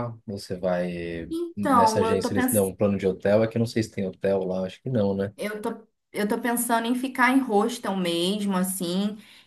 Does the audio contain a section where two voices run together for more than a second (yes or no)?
yes